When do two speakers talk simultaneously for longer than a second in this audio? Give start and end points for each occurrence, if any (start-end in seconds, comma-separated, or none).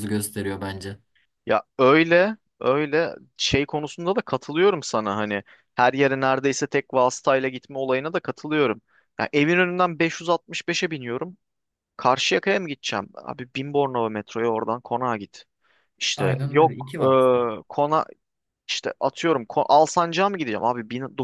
16.2-17.5